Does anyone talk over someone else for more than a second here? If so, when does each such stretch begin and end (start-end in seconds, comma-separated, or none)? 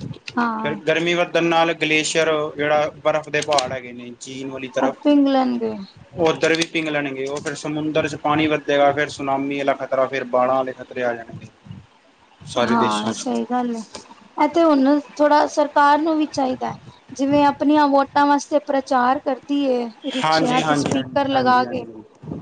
20.2-21.8